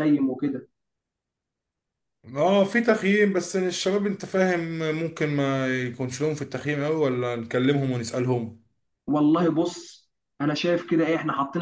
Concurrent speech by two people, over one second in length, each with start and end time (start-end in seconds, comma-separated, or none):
none